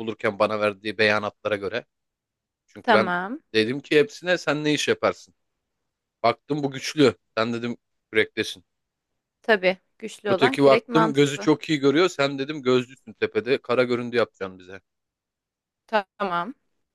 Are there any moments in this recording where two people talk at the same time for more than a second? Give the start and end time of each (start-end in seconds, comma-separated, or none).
10.3-11.5